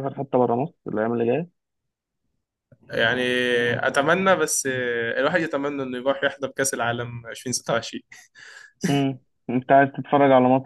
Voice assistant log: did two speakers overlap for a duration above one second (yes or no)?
no